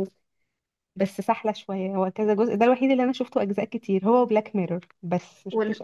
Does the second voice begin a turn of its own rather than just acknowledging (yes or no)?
yes